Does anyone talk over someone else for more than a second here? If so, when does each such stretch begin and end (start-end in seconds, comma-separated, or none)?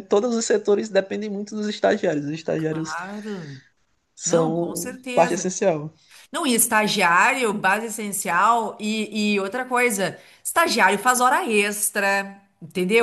4.2-5.5